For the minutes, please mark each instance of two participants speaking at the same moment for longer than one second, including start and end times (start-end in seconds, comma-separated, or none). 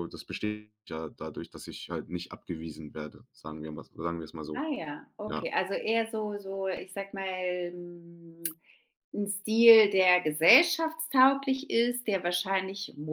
none